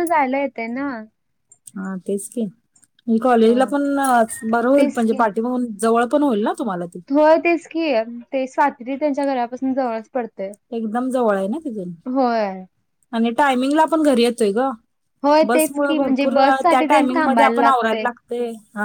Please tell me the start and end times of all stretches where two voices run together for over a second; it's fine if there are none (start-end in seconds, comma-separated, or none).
15.5-18.0